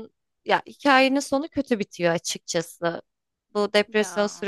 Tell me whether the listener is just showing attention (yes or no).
yes